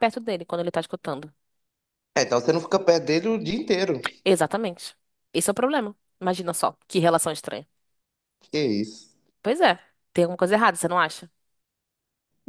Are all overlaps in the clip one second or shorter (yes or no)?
yes